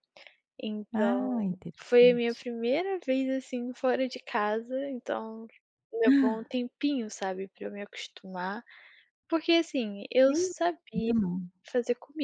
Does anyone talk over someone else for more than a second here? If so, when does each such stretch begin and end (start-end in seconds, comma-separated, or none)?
0.9-2.5